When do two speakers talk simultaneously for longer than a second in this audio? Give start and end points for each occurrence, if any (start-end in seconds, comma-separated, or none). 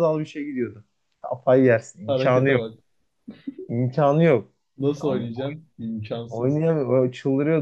none